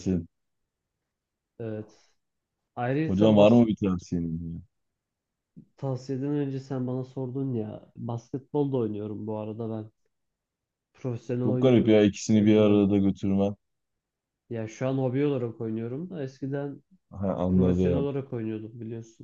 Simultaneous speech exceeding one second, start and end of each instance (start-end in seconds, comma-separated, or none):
11.4-12.8